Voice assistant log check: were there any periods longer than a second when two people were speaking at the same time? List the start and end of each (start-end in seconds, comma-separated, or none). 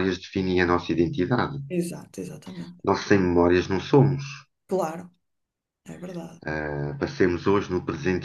none